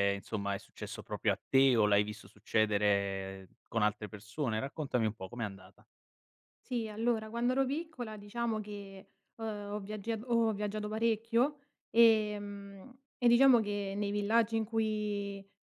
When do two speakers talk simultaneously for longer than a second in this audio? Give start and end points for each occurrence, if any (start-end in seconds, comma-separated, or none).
none